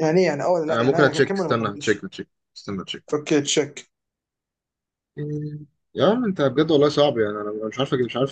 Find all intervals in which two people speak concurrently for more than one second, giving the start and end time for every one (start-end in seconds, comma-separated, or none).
0.7-2.1